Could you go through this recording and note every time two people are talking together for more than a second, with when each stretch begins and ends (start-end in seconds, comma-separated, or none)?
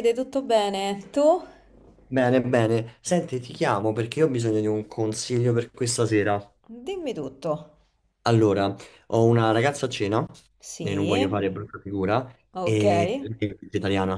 none